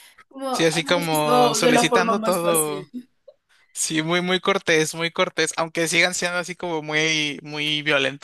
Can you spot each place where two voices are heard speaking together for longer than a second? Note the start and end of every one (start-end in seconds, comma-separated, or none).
0.5-2.9